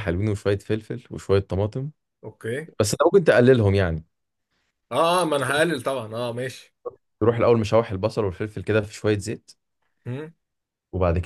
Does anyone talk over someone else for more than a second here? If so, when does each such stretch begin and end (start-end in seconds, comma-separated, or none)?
none